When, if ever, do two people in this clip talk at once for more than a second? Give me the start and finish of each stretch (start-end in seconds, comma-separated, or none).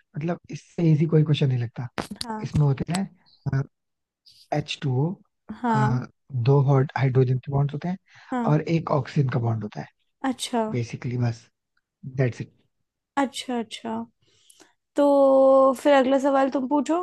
none